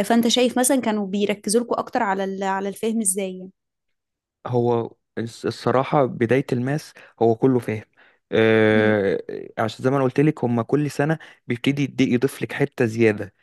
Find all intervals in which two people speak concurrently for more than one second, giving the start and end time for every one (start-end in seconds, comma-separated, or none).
none